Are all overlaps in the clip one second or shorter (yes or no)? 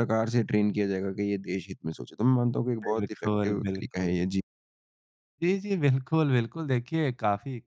no